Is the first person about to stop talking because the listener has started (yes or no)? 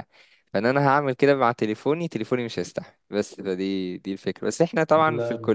no